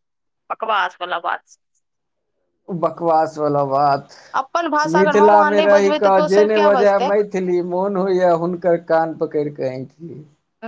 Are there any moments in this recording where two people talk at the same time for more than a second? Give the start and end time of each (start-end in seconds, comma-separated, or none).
4.9-7.1